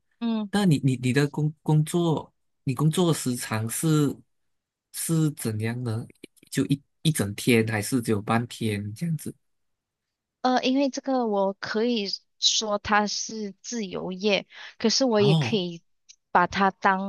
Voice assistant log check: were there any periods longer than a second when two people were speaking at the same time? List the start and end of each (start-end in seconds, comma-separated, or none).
none